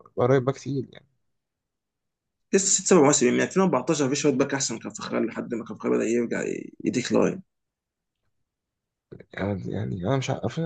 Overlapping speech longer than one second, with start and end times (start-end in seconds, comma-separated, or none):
none